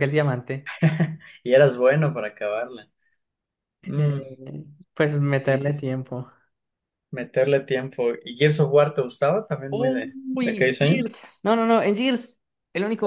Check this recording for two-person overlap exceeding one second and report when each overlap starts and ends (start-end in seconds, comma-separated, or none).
9.7-11.1